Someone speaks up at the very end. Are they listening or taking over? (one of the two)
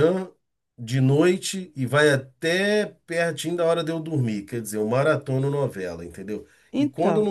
listening